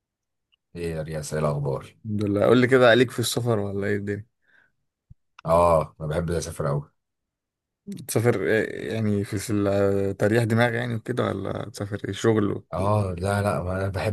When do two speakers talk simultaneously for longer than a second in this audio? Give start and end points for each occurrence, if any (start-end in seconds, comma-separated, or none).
none